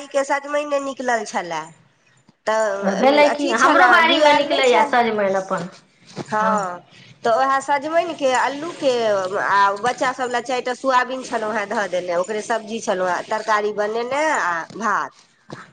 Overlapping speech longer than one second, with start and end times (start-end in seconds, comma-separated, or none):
3.0-4.9